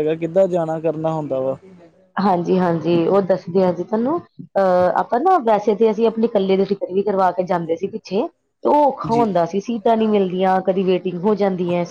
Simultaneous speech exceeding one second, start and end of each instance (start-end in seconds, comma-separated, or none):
none